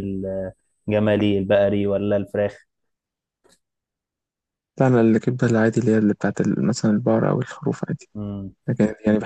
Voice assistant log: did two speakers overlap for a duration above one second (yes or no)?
no